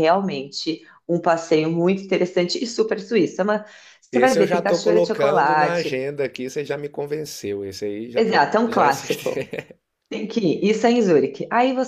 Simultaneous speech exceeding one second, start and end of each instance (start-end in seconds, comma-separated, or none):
4.1-6.0, 8.2-9.5